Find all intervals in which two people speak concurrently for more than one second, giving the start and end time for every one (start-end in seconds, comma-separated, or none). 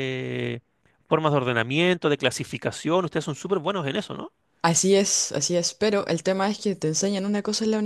none